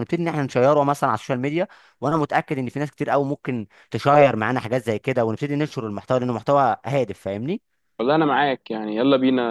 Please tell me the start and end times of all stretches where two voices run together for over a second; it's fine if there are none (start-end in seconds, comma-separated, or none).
none